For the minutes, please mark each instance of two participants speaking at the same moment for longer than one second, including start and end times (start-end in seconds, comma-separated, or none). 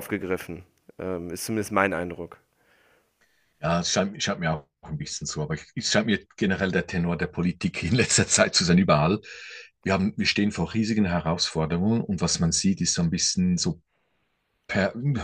none